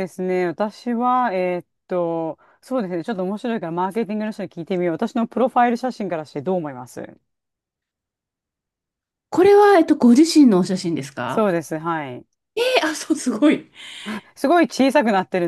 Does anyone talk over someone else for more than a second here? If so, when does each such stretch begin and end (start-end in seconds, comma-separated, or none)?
none